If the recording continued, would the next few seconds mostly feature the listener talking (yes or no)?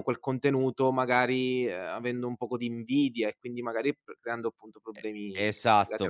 yes